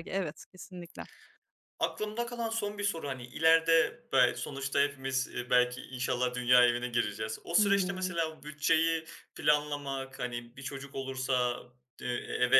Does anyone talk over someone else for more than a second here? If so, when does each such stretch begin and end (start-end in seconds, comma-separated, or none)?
none